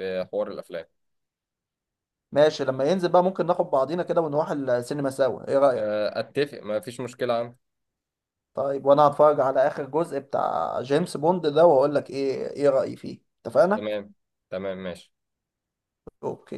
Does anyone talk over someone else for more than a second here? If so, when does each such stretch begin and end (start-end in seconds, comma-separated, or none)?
none